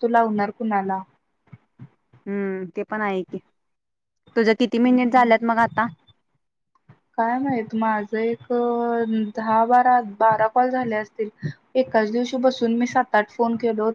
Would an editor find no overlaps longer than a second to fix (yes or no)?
yes